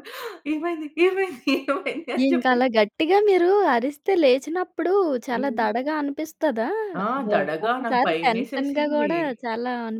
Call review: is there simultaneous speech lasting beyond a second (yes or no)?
yes